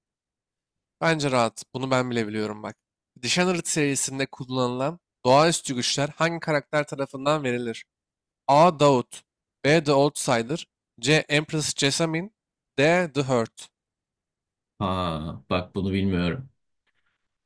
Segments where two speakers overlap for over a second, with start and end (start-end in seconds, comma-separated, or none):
none